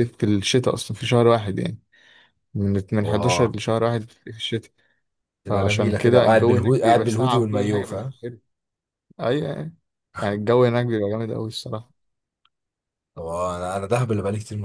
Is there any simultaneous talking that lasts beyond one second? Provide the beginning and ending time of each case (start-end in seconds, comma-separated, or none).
5.5-8.1